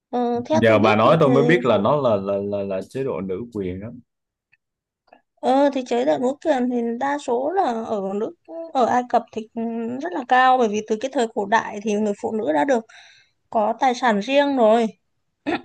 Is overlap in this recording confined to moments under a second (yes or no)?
no